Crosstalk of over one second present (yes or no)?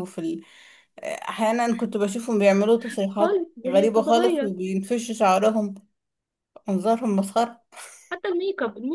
yes